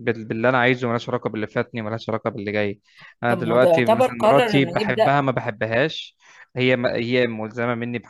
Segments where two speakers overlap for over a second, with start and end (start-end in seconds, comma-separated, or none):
3.3-5.1